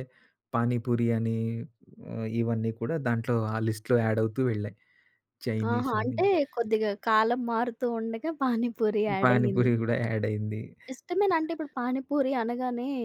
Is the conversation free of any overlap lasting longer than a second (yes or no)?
yes